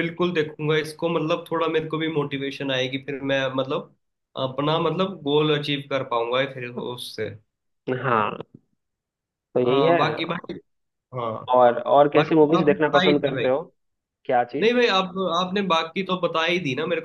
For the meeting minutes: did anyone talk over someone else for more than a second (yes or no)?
yes